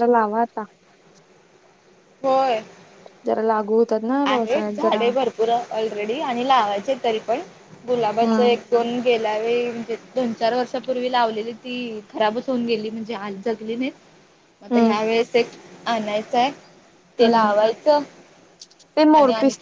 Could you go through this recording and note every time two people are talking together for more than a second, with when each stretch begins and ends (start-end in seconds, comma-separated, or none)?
none